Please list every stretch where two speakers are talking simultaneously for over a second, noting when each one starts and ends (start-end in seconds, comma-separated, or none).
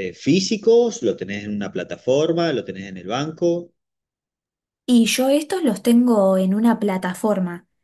none